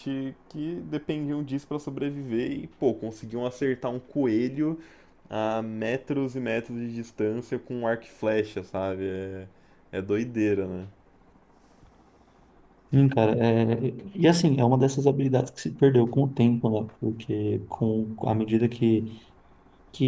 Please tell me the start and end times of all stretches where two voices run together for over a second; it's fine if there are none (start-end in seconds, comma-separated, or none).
none